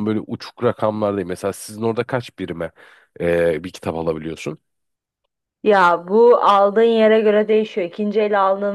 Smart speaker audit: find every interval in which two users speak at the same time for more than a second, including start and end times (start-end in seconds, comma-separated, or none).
none